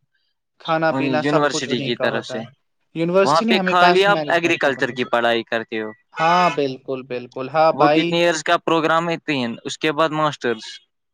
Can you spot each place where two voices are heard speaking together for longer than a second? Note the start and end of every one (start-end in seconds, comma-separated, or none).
0.9-2.4, 3.2-5.1